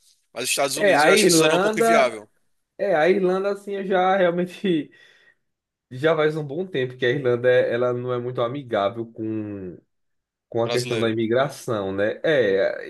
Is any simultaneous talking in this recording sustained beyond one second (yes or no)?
yes